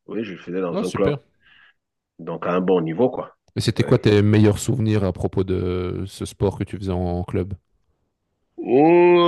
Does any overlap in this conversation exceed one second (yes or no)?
no